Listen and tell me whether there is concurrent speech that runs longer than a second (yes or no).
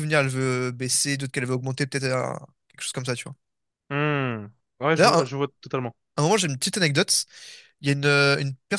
no